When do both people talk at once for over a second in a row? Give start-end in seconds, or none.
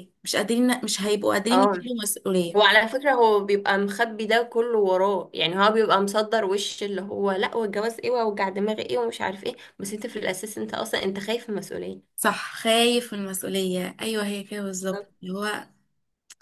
none